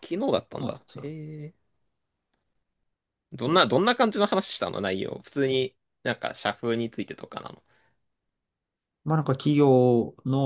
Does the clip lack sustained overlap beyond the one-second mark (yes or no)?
yes